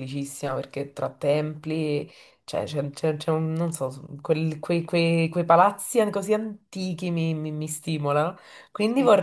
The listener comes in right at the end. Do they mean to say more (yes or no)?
no